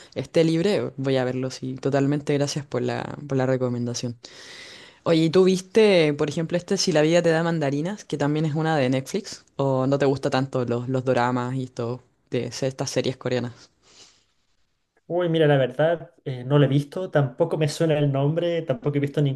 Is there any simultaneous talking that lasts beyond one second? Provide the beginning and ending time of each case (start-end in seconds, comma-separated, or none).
none